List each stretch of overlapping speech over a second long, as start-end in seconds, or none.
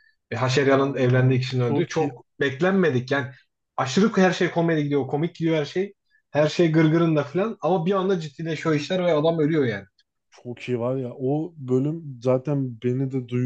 0.5-2.1